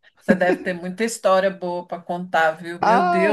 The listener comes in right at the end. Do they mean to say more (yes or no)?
yes